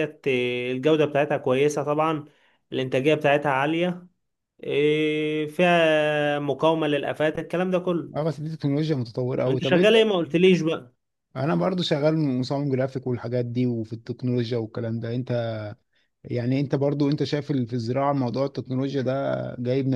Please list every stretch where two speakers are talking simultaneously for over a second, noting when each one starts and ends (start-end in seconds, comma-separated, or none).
none